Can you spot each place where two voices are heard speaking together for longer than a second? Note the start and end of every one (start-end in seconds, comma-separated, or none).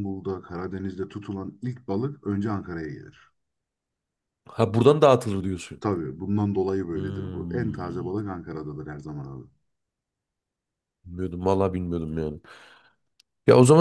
6.9-8.4